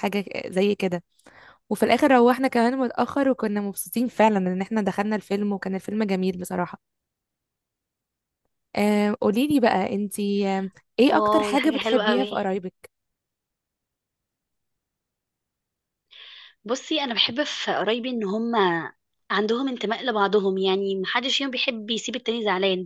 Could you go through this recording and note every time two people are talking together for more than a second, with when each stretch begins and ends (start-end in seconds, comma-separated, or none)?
11.1-12.5